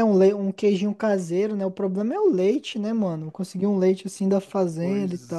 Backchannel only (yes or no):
no